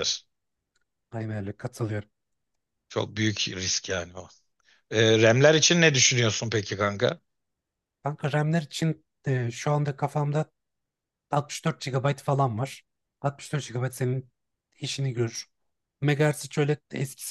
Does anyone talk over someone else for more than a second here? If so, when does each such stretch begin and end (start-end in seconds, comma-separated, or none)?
none